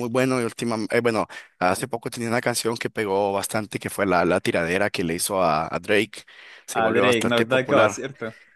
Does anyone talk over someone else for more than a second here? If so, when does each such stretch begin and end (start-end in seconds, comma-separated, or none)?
6.7-8.0